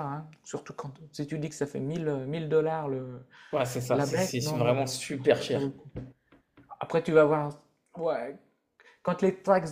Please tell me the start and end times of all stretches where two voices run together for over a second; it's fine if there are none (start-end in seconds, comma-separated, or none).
3.9-5.7